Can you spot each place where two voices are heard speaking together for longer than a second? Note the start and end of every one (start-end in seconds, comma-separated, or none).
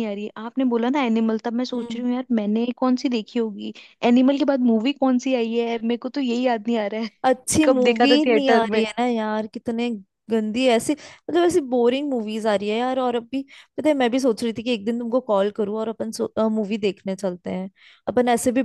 7.2-8.8